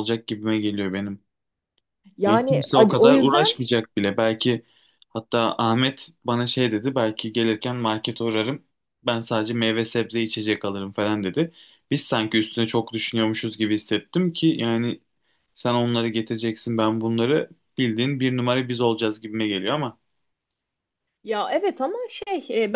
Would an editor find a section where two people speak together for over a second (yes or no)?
yes